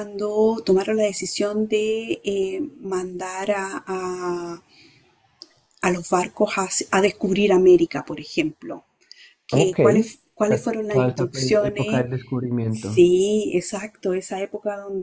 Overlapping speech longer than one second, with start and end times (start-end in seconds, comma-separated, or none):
10.5-12.0